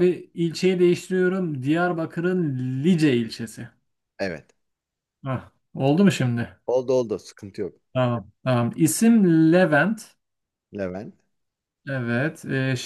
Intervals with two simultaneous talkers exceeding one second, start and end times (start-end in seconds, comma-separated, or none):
none